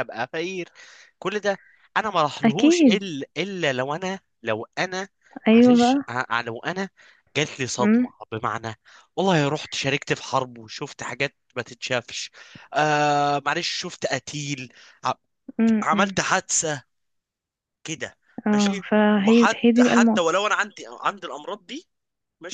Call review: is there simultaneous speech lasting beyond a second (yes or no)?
yes